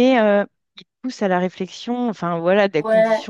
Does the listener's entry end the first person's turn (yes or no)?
no